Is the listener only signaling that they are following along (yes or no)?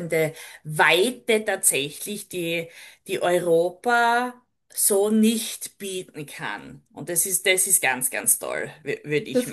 no